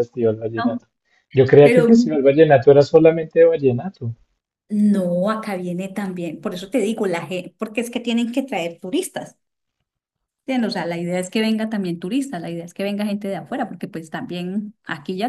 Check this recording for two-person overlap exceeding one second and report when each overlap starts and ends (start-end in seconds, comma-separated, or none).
none